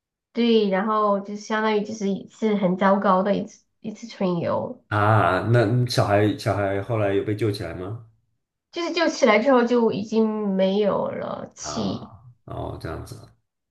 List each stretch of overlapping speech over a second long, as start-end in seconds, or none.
none